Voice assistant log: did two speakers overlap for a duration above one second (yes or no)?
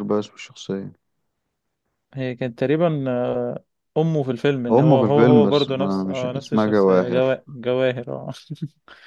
yes